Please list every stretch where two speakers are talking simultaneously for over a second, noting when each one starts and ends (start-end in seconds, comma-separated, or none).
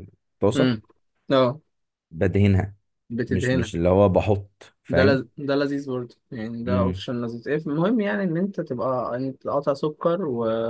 none